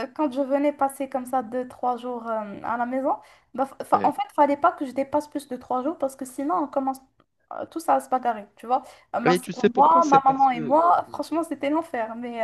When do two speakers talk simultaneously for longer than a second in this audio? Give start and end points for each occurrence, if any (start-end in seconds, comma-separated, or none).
9.3-10.8